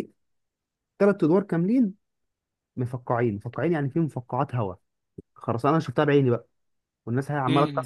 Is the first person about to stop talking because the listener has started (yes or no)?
no